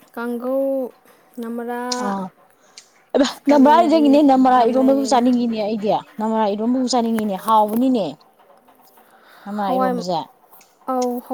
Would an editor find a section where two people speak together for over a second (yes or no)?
yes